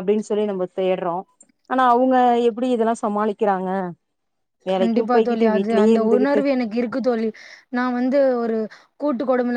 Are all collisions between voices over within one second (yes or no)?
no